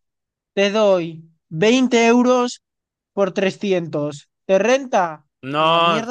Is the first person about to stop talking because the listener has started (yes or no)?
yes